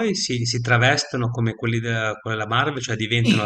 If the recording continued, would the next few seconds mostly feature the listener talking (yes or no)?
yes